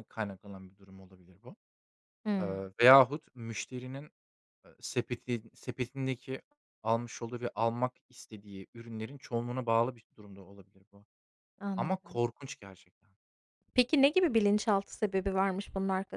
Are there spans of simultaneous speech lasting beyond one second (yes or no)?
no